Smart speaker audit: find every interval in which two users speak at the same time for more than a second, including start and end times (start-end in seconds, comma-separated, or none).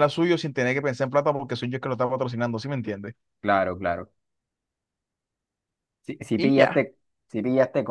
none